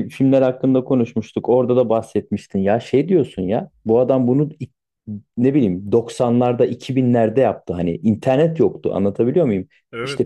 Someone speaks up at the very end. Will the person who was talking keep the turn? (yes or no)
yes